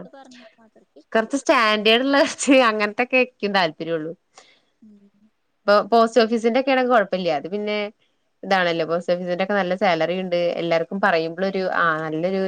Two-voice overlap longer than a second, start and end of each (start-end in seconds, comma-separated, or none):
none